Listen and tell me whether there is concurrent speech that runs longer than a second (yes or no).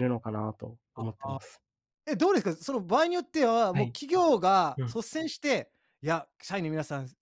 no